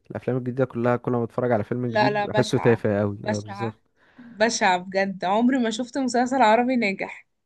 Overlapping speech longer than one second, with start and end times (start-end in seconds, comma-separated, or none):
1.9-3.8